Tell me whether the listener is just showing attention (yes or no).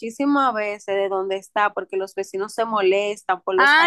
no